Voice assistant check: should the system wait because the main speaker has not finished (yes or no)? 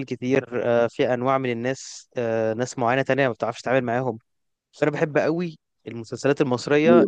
yes